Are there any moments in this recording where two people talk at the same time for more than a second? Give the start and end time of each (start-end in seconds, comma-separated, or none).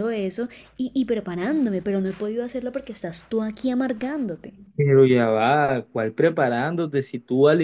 none